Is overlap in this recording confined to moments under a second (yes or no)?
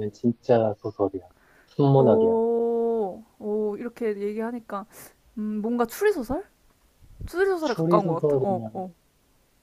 no